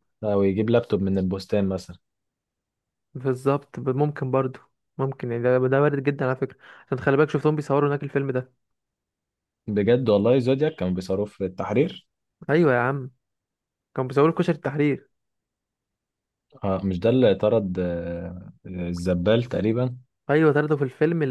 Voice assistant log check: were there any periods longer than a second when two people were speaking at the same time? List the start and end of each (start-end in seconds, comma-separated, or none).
none